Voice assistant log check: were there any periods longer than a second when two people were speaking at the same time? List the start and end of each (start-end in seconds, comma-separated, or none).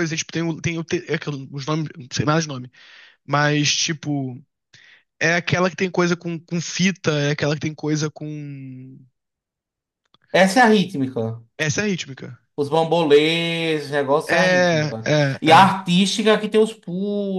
14.2-15.8